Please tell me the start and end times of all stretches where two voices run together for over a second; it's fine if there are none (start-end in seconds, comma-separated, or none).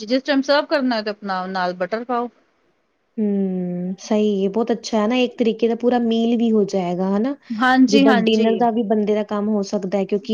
none